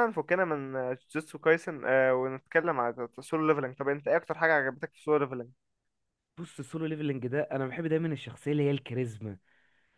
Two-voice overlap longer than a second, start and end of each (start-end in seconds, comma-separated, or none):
none